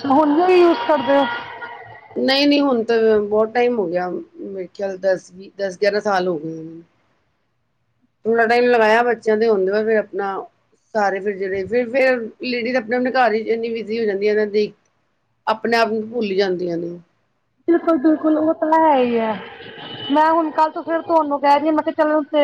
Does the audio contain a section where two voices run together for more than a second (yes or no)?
no